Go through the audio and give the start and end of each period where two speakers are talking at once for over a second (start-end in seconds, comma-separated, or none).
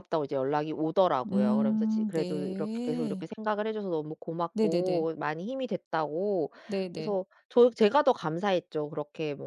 1.2-3.3